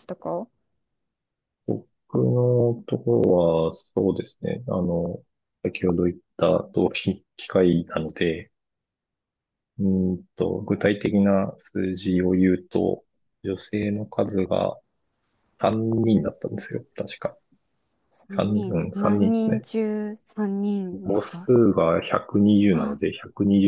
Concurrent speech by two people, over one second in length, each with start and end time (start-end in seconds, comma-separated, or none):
18.3-19.7